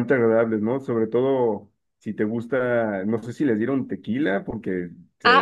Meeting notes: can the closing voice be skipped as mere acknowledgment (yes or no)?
no